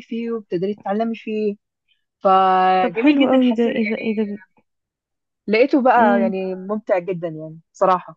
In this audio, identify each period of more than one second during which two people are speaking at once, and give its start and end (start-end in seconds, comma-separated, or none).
2.8-4.0